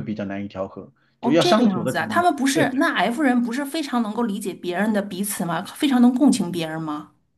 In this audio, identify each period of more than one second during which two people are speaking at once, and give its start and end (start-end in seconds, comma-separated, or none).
1.2-2.7